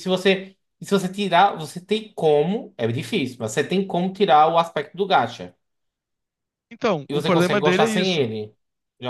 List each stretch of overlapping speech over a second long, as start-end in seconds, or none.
7.1-8.3